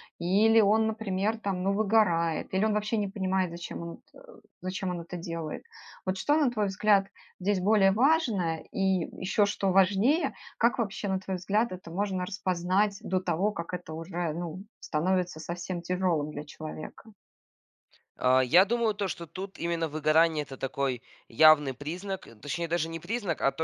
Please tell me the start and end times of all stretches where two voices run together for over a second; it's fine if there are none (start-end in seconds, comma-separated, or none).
none